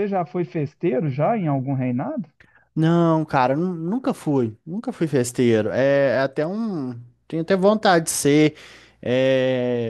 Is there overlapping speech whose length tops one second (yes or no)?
no